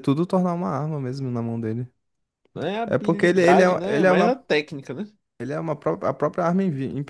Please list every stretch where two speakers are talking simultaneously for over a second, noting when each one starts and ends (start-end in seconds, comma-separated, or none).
2.9-4.4